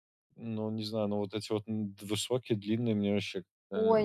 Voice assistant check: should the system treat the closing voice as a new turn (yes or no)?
yes